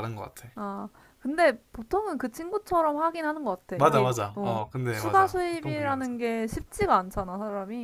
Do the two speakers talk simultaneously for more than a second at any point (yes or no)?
yes